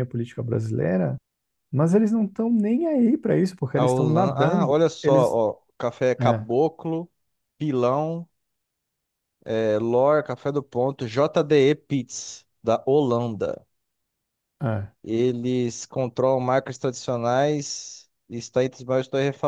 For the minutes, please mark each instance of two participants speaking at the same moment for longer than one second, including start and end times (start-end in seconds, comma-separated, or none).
3.8-5.4